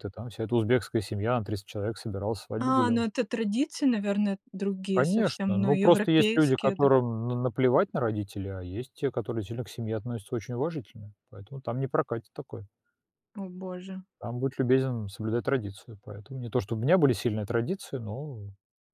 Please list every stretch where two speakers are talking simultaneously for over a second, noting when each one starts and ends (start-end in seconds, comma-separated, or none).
5.0-6.9